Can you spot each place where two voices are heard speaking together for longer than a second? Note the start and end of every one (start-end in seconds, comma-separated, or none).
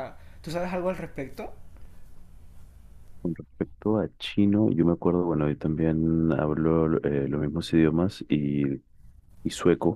none